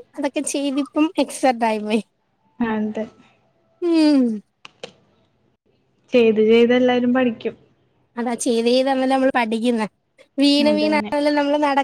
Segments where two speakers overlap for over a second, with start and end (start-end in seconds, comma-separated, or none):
none